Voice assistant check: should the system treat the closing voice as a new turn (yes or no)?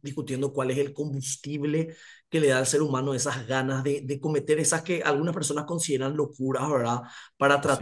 no